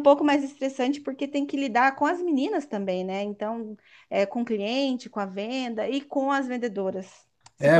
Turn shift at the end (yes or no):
yes